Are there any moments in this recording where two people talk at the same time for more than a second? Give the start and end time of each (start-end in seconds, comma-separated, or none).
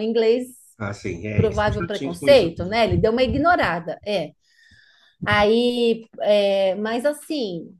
1.4-2.8